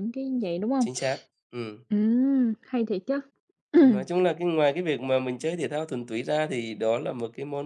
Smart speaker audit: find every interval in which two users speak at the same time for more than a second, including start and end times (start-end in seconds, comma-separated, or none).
none